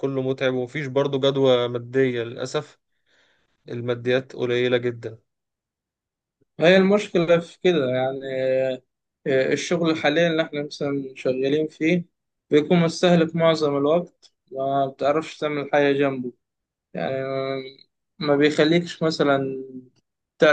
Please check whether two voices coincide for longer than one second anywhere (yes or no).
no